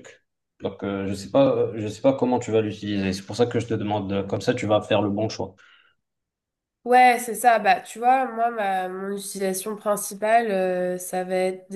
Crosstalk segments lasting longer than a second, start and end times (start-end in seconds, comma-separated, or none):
none